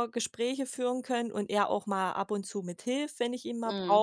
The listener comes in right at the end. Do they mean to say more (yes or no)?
no